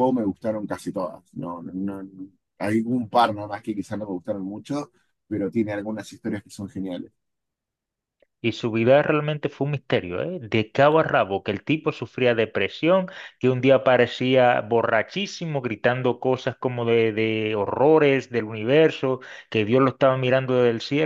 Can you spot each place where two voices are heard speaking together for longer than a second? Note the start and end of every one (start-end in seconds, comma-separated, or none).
none